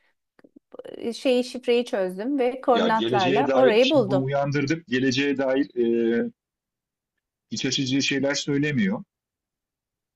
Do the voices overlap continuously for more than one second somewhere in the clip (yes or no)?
yes